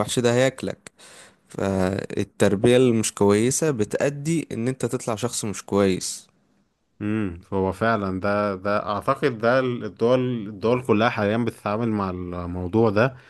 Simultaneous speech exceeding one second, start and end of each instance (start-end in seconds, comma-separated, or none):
none